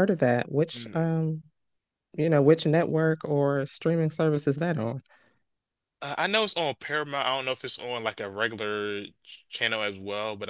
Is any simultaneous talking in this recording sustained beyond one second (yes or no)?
no